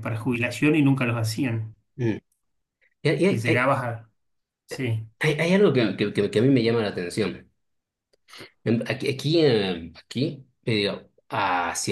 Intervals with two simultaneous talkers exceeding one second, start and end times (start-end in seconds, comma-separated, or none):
none